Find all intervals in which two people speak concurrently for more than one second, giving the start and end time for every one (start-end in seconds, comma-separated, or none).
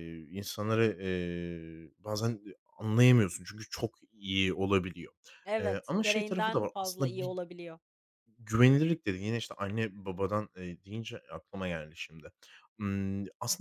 5.6-7.3